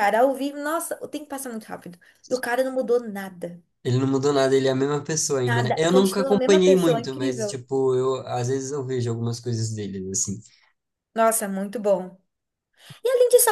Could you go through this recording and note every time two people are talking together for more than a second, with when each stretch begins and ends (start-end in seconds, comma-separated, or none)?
5.4-7.6